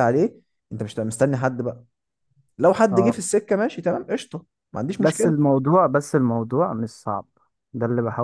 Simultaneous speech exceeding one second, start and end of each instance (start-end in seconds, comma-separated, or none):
none